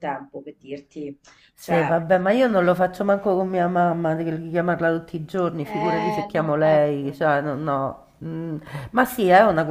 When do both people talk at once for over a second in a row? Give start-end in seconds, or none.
5.6-7.2